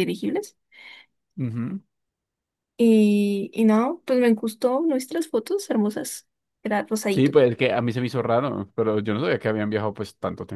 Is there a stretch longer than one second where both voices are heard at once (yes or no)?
no